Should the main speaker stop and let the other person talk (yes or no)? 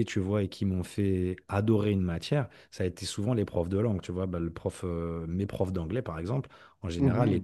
no